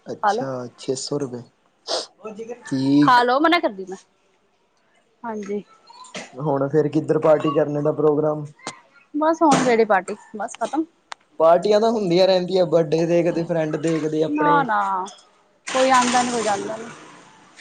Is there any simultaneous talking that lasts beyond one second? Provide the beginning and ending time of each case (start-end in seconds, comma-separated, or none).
none